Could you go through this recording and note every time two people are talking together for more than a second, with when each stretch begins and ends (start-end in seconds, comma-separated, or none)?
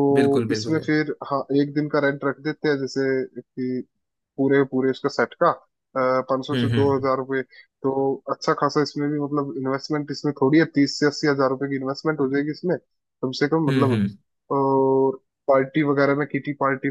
none